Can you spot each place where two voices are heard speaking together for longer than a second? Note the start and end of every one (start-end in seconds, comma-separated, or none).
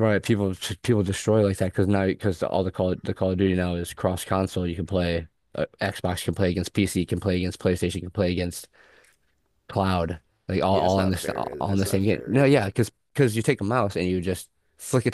10.7-12.7